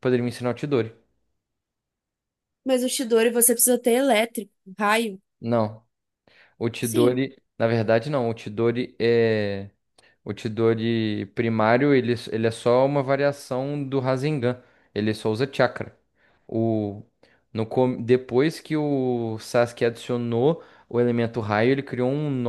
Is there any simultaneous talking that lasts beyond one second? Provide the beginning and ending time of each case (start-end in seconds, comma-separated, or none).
none